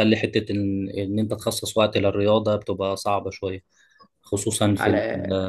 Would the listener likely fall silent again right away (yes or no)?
yes